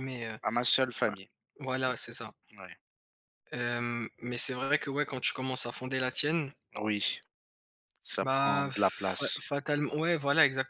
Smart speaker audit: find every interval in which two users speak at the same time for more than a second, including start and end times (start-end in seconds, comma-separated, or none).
8.2-9.4